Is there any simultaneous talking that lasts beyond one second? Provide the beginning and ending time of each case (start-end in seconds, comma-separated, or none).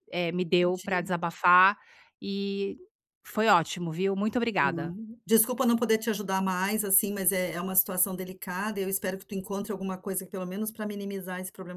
none